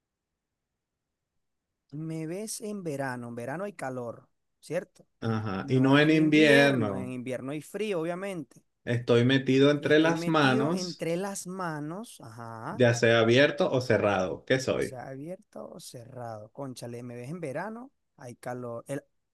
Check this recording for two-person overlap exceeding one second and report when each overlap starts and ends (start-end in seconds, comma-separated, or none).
5.6-7.1, 9.8-11.1